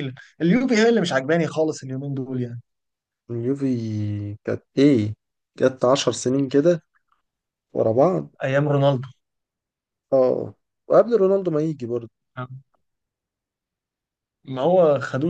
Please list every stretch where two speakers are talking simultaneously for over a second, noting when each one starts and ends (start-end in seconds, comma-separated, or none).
none